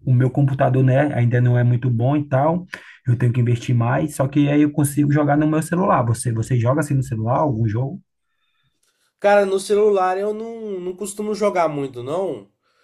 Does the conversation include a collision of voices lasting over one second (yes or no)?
no